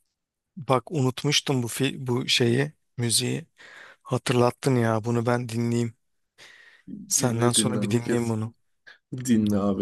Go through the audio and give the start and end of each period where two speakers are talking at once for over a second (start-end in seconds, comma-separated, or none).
7.1-8.3